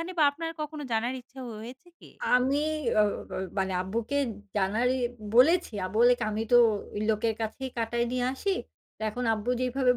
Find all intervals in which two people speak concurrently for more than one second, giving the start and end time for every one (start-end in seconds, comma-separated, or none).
none